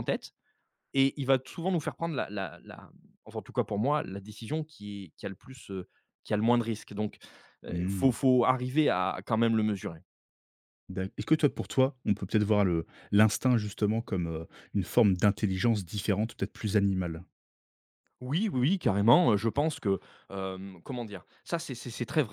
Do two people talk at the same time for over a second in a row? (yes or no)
no